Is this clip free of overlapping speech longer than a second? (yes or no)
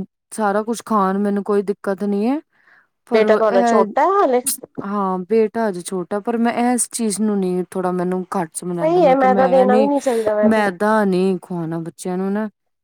no